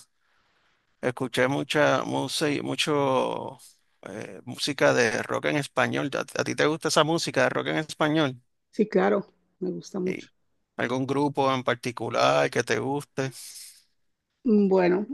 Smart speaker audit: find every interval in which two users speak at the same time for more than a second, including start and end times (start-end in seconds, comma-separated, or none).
none